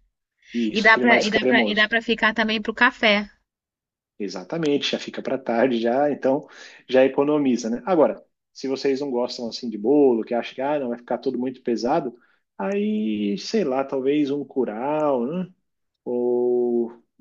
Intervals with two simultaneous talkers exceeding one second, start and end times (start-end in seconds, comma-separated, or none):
0.7-1.9